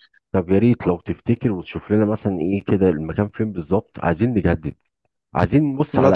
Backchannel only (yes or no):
yes